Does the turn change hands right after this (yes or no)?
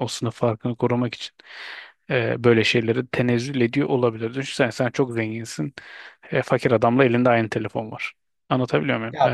yes